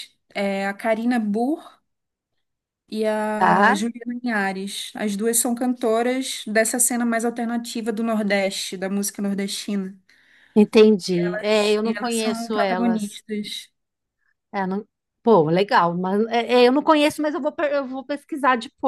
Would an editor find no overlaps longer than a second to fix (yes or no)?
no